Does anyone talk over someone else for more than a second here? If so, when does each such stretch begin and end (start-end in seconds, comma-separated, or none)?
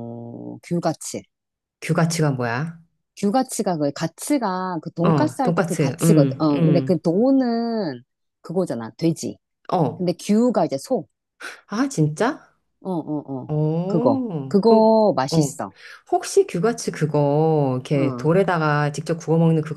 5.0-7.0, 13.5-15.6